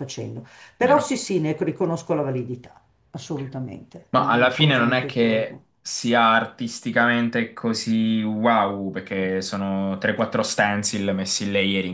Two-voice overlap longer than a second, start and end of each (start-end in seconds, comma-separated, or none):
4.1-5.7